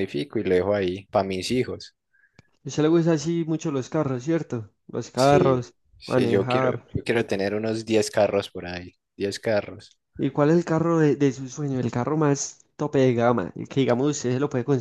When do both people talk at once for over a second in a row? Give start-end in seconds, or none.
5.1-6.9